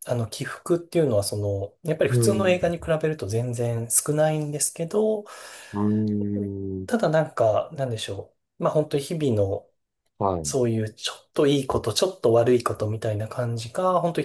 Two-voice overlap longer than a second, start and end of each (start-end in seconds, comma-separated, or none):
none